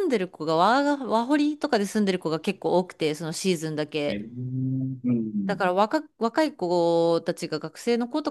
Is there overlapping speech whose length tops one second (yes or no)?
no